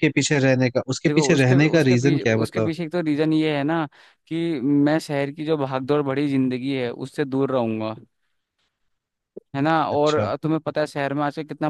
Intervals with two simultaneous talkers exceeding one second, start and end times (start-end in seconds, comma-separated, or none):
1.1-2.7